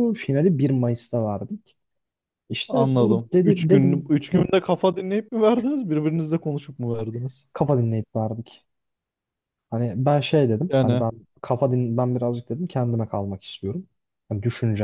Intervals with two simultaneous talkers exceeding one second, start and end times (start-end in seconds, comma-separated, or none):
2.7-4.5